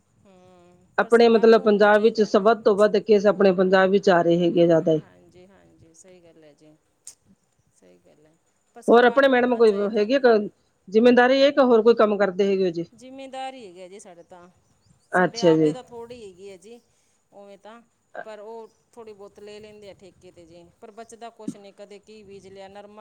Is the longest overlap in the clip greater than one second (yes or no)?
yes